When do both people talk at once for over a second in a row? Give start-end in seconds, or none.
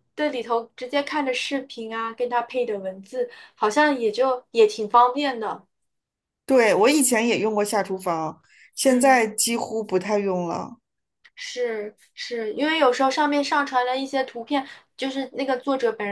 none